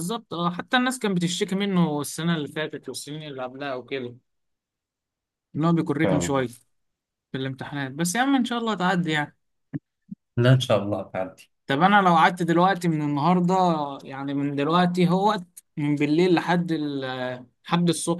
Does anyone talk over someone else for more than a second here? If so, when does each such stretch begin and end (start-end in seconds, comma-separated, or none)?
none